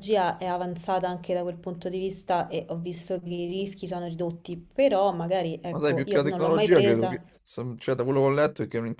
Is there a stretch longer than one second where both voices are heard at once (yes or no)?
yes